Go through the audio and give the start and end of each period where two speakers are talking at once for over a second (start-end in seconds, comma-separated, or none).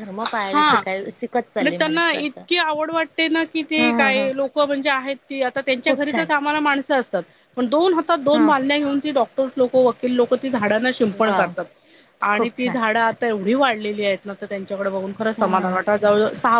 none